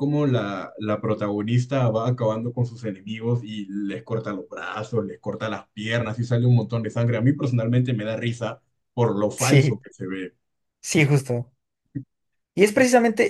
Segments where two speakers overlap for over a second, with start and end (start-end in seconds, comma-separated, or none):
none